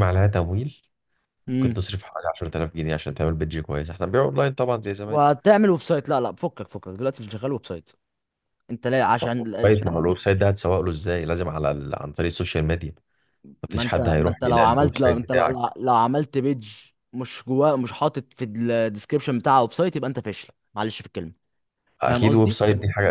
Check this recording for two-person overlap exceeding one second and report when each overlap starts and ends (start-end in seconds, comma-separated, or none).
13.7-15.6